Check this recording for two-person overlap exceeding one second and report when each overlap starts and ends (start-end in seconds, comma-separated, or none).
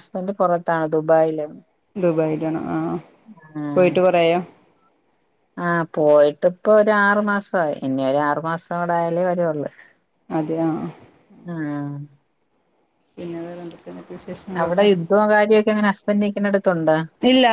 none